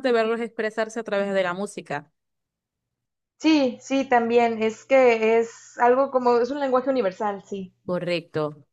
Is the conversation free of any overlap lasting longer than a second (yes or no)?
yes